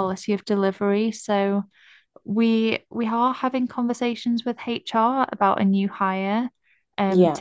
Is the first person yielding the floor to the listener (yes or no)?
no